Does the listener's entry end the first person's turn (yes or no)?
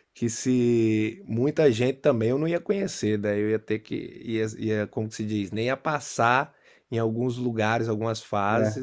no